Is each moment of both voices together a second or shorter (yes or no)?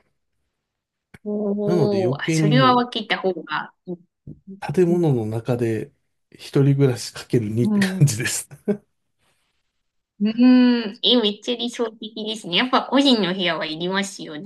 no